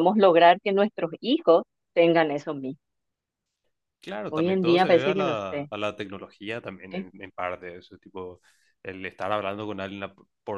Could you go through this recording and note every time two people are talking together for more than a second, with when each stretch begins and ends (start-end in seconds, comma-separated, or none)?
4.3-5.7